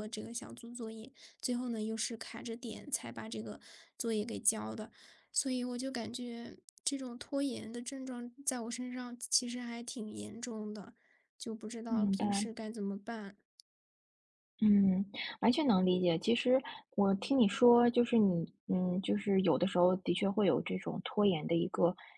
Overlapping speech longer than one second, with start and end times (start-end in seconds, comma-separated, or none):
none